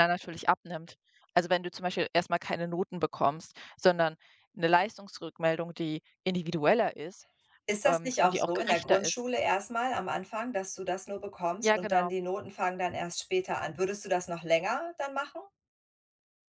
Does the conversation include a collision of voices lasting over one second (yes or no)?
yes